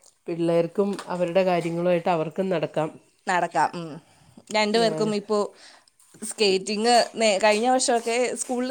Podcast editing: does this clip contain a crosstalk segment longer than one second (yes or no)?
no